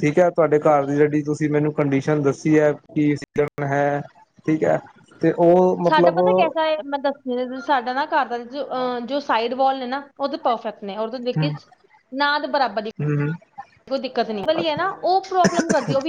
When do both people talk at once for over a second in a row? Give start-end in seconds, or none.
none